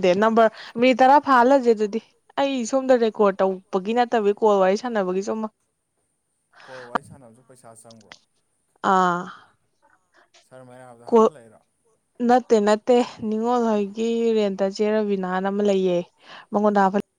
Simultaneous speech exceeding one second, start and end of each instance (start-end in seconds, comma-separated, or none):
none